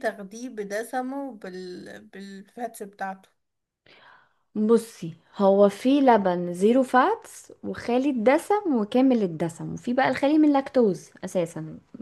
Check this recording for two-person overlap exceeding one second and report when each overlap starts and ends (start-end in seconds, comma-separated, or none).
none